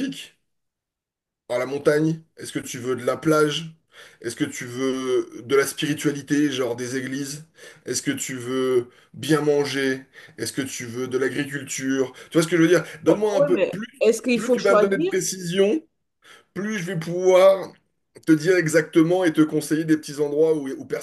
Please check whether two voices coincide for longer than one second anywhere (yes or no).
yes